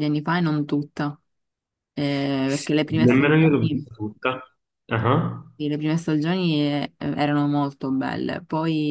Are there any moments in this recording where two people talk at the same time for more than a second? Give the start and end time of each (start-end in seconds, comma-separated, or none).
2.4-3.9